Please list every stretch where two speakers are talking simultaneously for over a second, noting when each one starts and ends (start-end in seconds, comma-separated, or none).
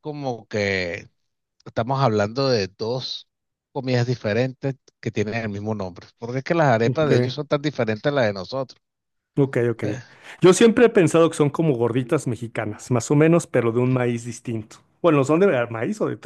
none